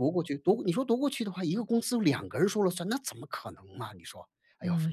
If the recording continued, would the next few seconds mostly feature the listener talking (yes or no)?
yes